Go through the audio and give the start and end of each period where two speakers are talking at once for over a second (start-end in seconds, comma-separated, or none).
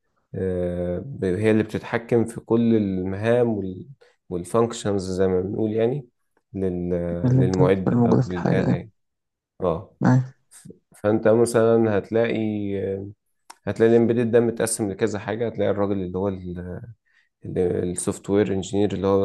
7.4-8.8